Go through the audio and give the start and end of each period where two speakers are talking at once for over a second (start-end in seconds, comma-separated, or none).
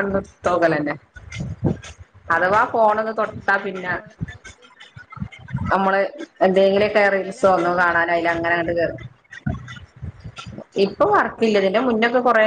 7.2-8.5